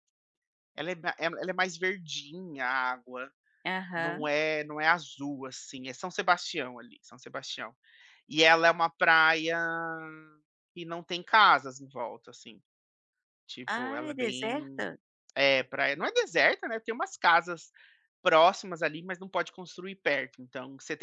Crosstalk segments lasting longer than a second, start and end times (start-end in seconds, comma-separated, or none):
13.7-14.9